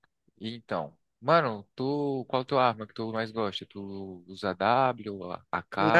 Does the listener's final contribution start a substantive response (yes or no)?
yes